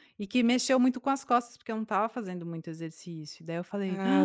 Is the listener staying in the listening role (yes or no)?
no